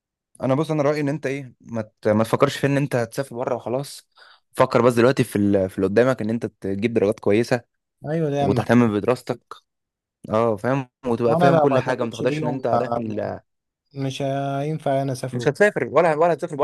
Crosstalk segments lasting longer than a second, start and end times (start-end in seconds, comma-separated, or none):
11.3-13.0